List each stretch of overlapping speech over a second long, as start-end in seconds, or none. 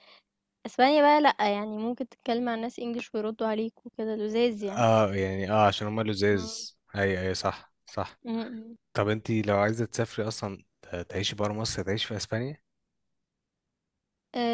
none